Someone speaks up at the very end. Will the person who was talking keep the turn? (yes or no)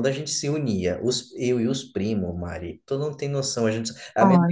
yes